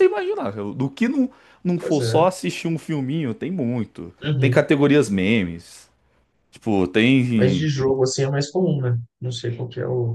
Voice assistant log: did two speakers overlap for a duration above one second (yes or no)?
no